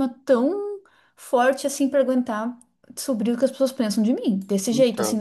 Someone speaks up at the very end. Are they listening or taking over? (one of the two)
listening